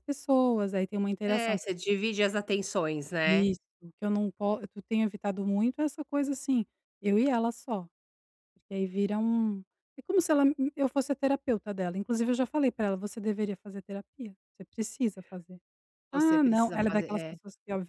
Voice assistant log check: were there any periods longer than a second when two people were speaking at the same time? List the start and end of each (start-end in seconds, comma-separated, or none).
16.1-17.4